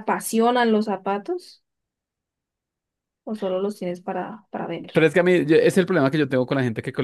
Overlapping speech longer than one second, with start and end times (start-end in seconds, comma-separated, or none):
none